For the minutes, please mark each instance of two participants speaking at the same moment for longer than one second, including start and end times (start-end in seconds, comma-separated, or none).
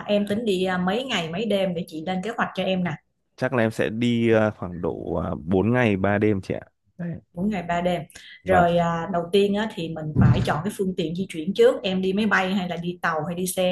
none